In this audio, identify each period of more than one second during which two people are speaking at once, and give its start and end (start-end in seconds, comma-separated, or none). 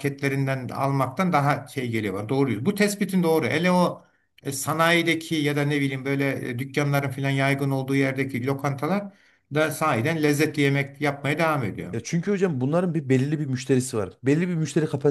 none